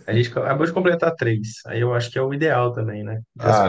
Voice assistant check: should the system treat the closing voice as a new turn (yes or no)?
yes